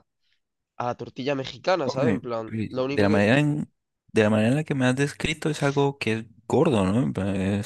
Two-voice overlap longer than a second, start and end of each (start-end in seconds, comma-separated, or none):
1.8-3.4